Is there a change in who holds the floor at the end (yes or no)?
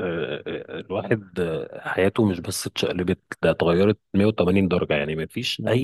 no